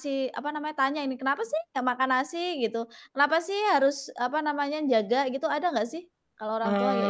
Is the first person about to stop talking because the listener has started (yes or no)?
yes